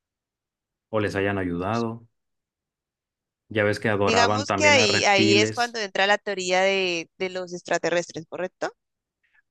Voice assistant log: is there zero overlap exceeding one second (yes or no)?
no